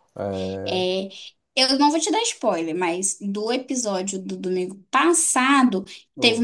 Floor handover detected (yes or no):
no